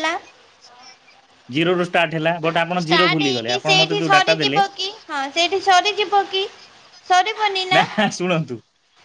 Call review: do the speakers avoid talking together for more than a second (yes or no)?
no